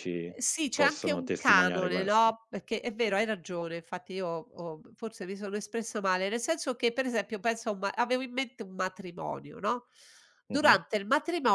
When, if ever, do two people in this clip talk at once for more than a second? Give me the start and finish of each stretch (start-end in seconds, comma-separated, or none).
0.7-2.3